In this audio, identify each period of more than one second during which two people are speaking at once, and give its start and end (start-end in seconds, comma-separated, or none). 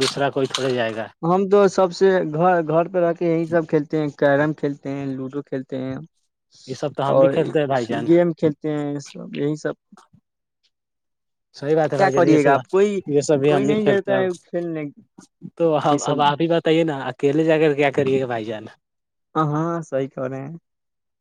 12.0-14.3